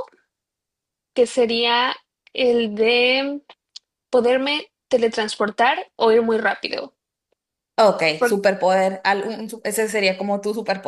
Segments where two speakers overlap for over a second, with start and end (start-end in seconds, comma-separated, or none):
none